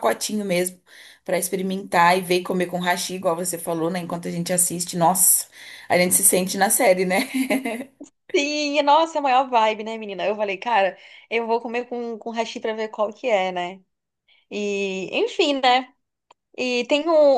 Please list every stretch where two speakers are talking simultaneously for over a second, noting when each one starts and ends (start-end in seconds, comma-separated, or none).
none